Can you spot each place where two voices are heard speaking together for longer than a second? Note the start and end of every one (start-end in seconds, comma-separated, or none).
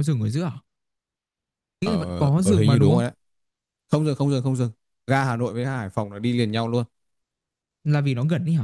1.8-3.0